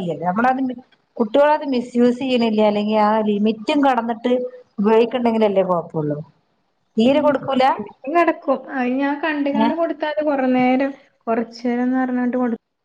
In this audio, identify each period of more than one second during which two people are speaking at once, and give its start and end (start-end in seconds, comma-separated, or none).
none